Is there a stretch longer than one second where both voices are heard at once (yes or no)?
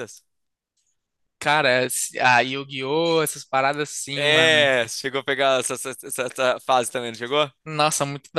no